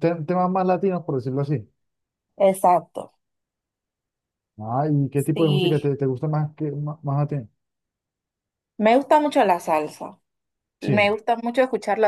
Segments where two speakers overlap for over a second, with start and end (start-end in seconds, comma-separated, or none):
none